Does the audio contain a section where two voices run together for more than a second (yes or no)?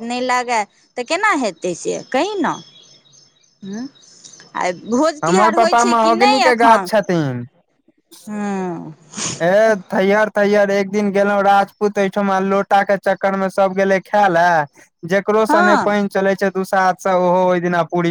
yes